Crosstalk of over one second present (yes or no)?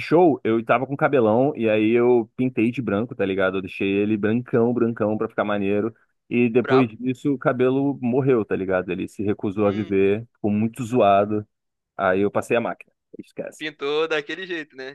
no